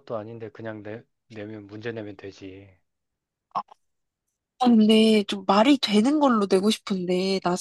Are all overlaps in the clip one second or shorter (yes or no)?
yes